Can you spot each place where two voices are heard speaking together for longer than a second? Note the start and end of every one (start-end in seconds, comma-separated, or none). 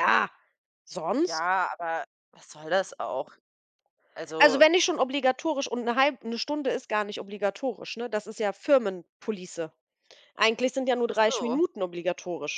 none